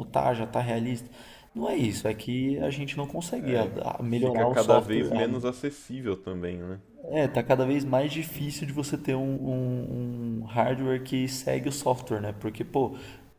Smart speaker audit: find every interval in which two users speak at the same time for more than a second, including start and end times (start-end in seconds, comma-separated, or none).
3.4-5.1